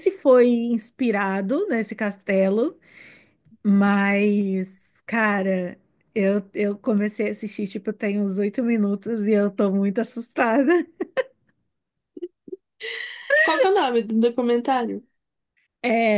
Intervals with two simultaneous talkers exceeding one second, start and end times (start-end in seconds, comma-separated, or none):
none